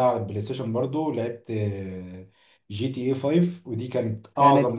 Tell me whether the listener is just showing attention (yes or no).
yes